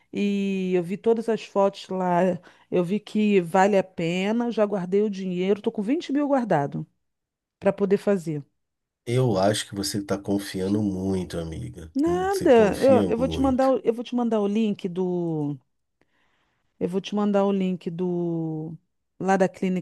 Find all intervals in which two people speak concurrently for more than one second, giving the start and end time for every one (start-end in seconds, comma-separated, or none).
11.9-13.7